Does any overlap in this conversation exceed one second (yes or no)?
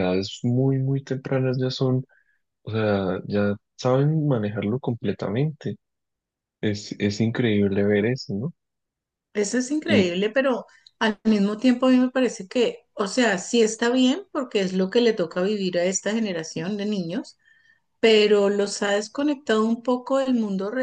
no